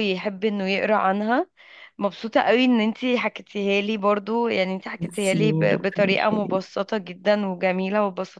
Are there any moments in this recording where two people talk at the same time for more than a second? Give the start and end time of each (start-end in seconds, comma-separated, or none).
5.0-6.6